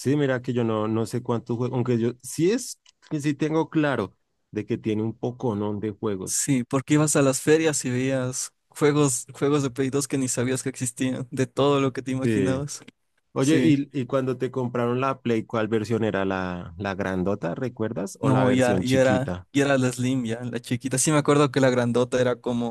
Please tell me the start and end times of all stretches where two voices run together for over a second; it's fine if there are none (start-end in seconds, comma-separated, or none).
18.2-19.5